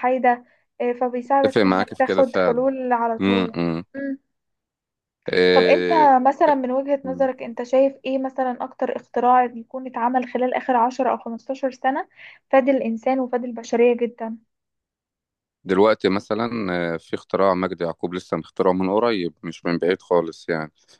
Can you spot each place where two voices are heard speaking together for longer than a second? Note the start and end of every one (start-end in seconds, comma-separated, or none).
1.4-2.6